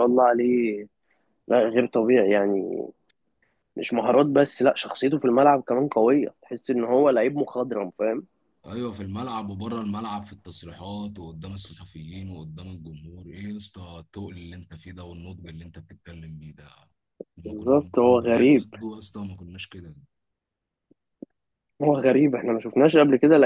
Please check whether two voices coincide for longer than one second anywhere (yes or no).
yes